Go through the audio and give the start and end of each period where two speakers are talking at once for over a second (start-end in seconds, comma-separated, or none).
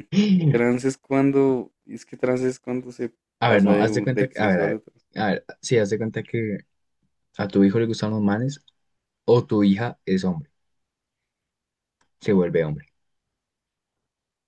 3.4-4.9